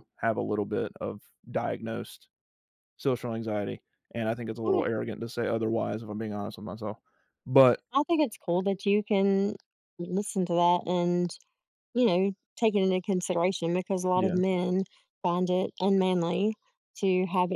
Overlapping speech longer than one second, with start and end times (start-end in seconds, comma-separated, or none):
none